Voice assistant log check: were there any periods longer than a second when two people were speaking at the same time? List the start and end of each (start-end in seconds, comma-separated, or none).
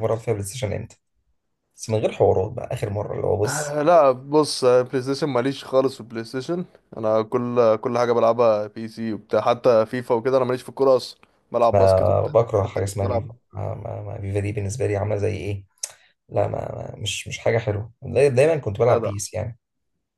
11.7-13.3